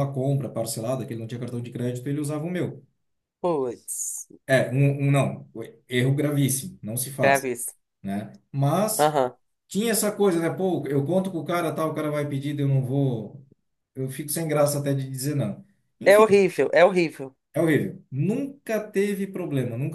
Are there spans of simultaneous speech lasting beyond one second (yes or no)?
no